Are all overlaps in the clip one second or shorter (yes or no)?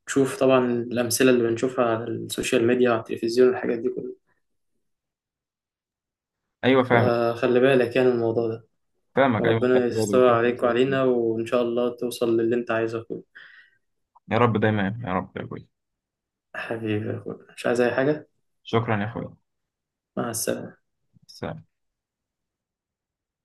no